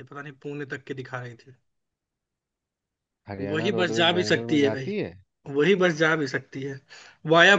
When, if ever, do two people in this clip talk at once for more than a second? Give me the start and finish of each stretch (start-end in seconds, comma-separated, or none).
3.5-4.9